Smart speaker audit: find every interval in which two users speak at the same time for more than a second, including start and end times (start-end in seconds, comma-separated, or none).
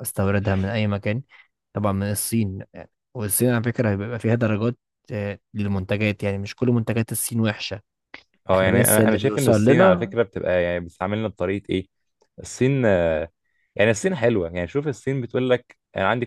8.5-10.1